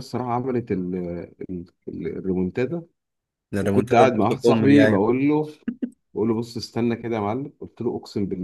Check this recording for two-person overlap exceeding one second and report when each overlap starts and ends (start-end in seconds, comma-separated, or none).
3.6-5.0